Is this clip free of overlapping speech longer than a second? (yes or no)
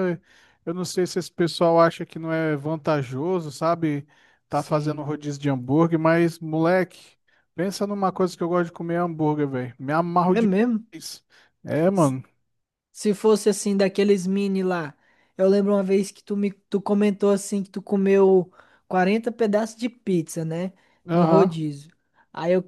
yes